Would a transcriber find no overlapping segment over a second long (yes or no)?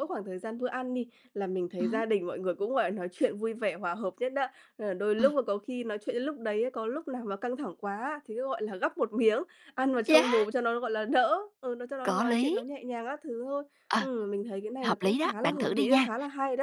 no